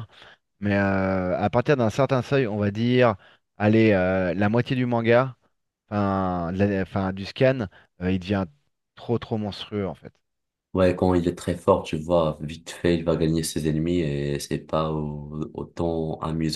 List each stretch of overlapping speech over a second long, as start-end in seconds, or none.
none